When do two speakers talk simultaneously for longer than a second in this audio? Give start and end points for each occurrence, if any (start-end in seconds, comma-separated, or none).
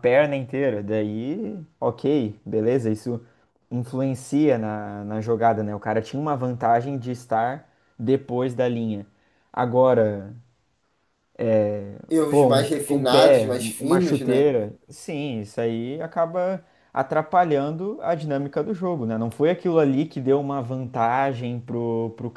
12.3-14.5